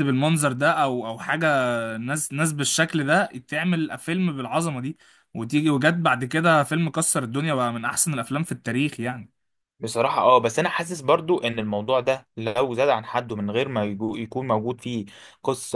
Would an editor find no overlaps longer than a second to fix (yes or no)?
yes